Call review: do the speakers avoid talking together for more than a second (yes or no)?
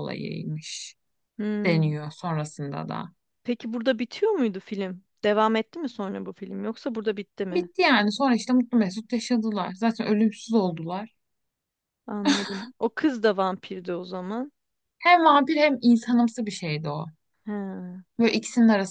yes